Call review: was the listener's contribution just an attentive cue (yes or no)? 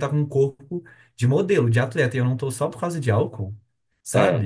no